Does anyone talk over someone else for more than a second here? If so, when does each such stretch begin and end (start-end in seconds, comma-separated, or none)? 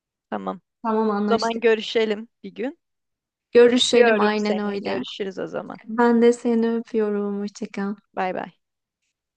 3.8-5.0